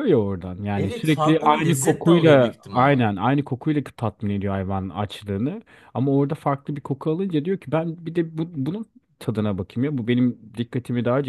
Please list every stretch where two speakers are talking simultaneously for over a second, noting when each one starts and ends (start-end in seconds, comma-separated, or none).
0.8-3.0